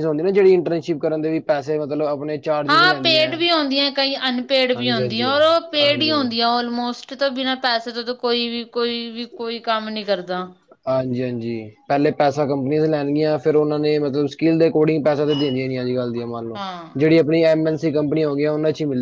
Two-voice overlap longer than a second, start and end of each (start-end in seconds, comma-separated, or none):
4.8-6.3